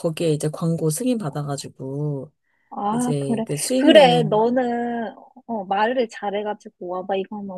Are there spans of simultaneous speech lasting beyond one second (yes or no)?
yes